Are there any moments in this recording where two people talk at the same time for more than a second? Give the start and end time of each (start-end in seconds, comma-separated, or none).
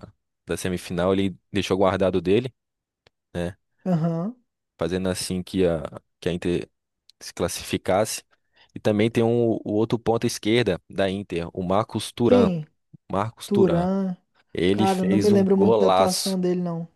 14.7-16.4